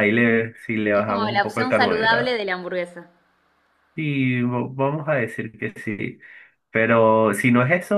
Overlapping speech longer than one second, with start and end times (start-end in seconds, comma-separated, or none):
0.9-2.4